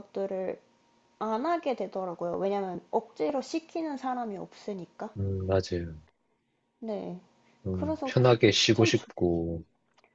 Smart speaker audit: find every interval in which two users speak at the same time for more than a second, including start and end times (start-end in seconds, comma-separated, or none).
7.7-9.1